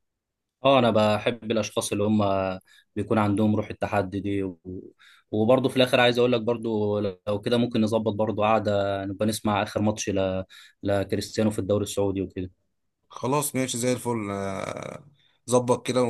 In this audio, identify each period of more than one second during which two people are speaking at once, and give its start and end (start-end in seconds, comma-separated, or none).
none